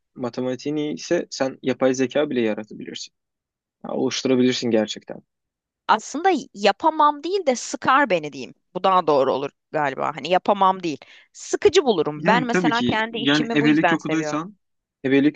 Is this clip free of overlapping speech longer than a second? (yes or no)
no